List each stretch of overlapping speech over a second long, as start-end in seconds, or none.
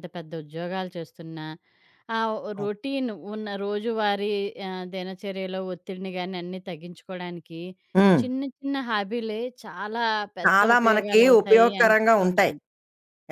10.4-12.5